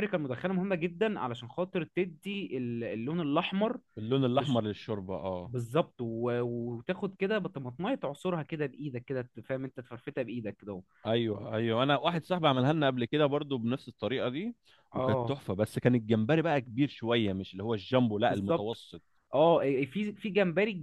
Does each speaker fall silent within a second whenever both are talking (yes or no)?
yes